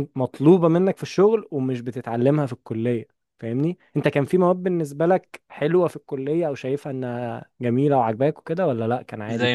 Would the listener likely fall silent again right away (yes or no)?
no